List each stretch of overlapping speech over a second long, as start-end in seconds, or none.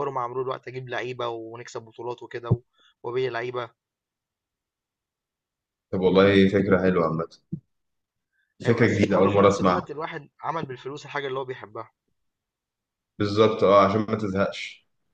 8.7-9.9